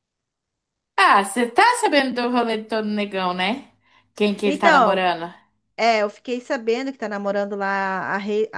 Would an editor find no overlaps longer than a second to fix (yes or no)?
yes